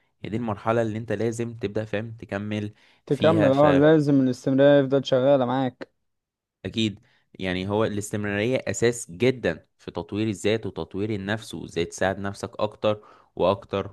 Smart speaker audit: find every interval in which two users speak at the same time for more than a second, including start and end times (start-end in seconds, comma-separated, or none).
none